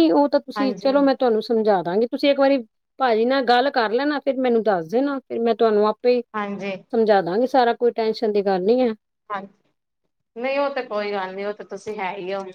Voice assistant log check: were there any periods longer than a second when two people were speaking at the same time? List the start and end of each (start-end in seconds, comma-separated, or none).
none